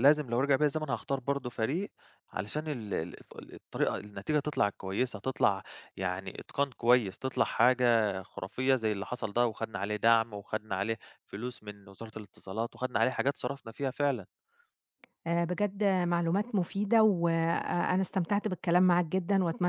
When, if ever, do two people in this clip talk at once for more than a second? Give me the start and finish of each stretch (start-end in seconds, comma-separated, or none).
none